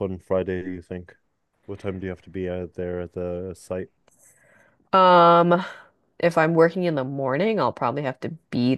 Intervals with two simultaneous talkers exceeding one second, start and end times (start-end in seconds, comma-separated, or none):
none